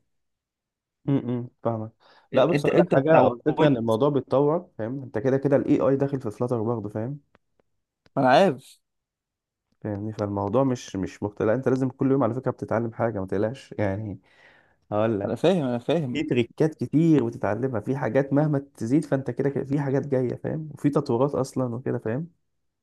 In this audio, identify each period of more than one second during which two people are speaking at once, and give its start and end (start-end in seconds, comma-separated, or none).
2.5-4.0